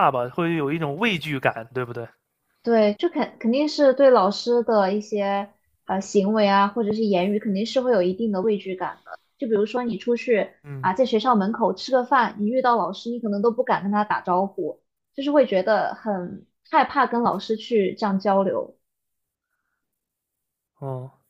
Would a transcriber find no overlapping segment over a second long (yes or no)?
yes